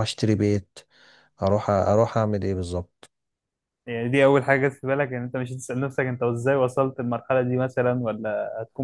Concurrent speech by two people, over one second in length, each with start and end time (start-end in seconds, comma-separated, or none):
none